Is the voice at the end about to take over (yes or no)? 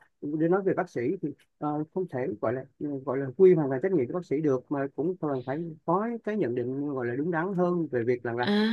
yes